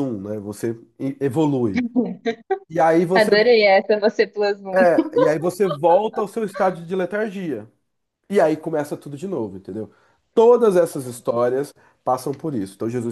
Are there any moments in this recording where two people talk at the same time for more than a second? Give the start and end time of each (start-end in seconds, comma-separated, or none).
none